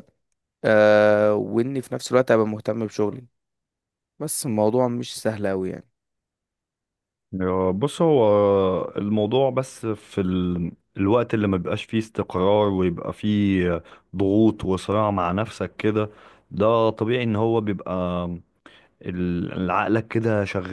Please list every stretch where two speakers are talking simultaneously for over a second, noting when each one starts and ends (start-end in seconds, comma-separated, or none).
none